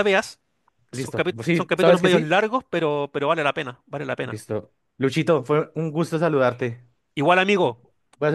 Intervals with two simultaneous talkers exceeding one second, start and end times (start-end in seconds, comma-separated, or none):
0.9-2.3